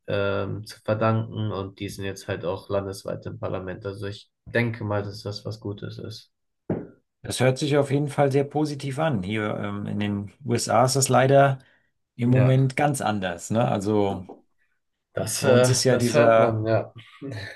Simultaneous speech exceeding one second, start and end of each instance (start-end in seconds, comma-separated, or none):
15.4-16.6